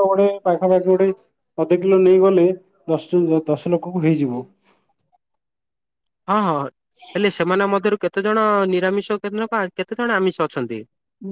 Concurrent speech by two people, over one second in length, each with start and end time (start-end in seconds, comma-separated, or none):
none